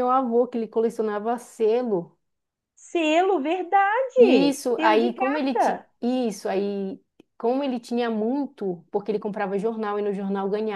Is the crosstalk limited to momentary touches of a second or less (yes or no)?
no